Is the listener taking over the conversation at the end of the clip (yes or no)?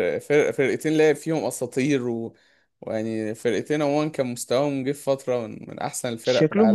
yes